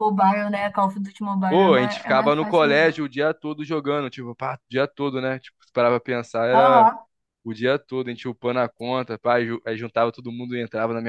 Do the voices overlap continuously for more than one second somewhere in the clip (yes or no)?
yes